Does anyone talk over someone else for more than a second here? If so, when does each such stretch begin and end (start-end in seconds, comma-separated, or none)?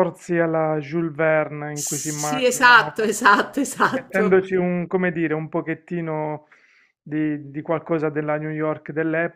1.7-3.0